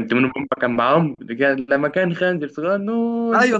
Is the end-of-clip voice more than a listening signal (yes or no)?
yes